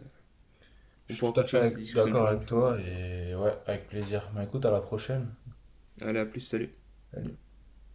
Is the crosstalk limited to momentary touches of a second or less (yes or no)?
no